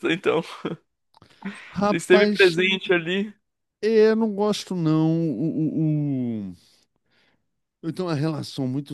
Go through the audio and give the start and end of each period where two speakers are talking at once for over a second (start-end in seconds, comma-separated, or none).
none